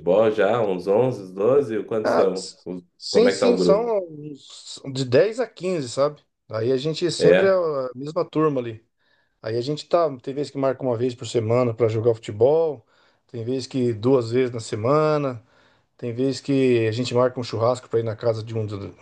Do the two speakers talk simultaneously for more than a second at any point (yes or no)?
yes